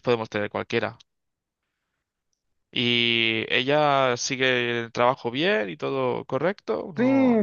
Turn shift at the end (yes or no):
yes